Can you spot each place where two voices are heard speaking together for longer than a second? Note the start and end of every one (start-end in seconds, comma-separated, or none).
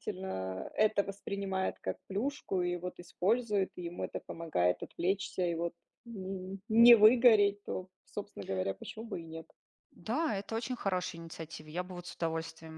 none